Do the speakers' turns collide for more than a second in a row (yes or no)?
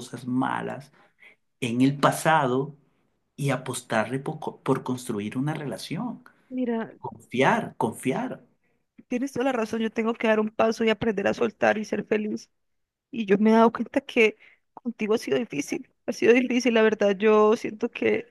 no